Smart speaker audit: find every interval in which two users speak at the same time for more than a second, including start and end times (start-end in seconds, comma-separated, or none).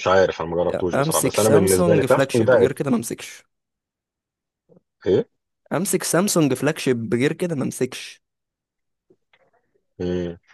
0.7-2.7